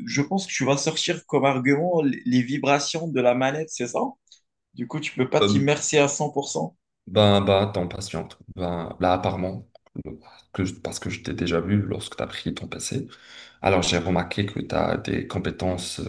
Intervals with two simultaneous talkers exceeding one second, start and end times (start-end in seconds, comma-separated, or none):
none